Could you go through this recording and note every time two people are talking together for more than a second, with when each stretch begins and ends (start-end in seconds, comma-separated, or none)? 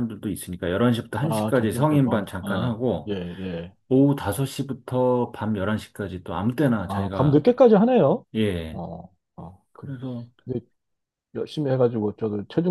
1.2-3.1